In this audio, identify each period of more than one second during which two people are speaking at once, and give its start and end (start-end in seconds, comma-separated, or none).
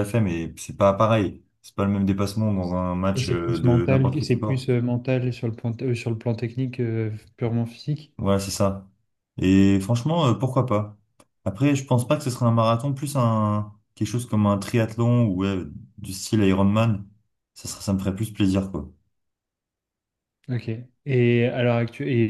3.2-4.7